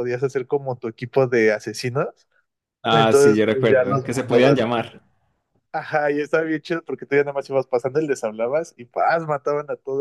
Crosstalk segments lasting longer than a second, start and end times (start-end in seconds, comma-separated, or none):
2.9-4.7